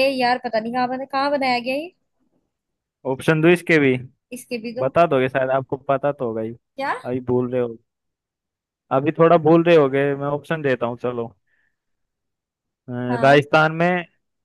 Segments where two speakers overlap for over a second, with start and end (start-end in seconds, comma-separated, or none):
none